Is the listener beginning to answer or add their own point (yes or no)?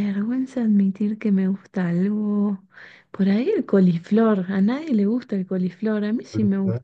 no